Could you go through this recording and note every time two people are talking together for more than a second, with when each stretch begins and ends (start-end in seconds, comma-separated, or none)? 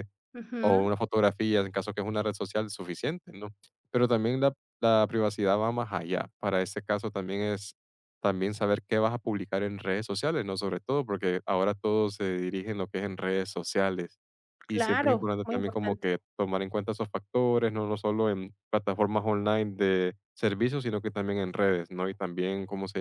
14.7-16.1